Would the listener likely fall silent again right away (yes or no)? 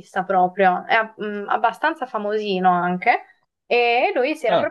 no